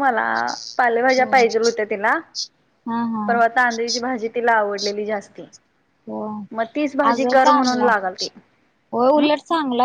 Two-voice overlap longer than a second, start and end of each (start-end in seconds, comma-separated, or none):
none